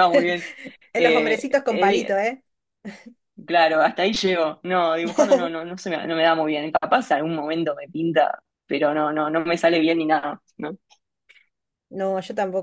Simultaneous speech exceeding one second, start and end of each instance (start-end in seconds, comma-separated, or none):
0.9-2.2